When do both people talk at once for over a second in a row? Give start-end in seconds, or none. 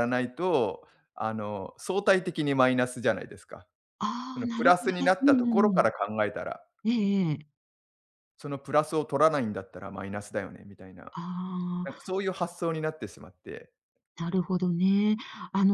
4.3-5.9